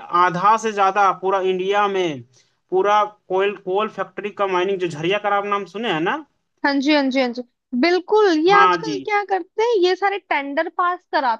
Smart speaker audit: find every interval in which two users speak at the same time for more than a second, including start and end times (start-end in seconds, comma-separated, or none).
none